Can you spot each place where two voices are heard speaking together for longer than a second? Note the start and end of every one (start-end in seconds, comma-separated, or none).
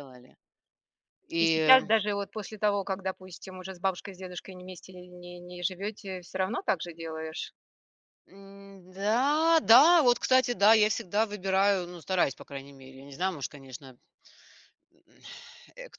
none